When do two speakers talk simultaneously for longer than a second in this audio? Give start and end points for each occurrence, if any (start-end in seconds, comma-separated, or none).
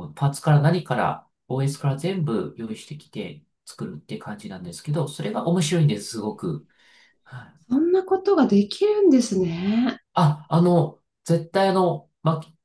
none